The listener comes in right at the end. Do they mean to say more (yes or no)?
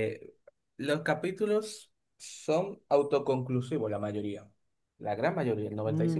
yes